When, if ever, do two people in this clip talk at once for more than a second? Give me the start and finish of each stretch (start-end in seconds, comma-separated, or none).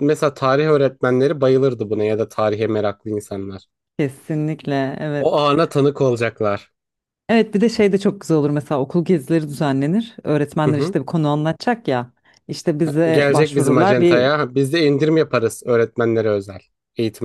13.1-14.3